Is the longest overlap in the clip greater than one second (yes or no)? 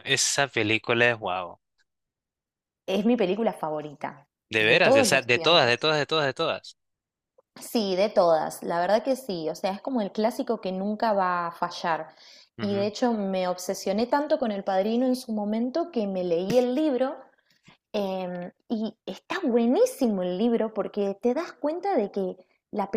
yes